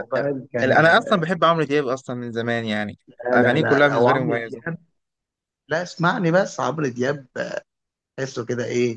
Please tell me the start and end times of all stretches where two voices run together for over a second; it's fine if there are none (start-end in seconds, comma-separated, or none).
3.2-4.6